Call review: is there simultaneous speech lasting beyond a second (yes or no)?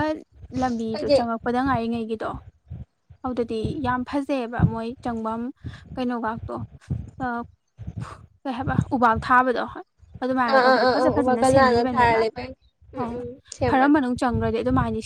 yes